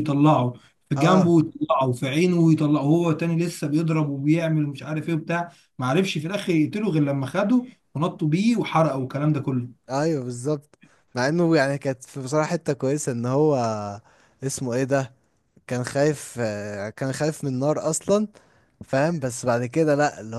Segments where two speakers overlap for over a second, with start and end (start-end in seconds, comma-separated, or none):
none